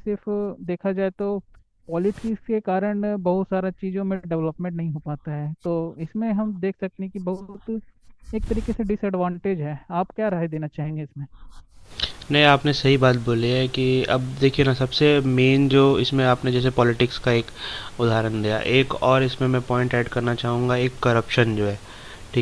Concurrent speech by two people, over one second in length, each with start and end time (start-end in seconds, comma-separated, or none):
none